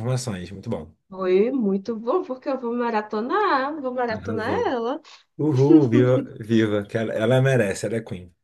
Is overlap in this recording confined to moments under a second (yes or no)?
yes